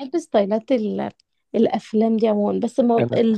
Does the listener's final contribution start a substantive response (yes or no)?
no